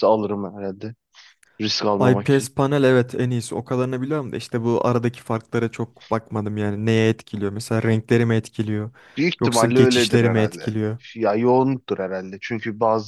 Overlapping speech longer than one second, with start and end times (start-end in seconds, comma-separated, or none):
9.4-10.8